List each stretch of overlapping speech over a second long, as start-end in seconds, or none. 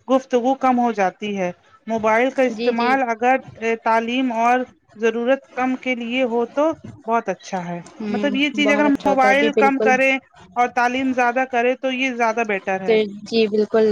8.0-9.9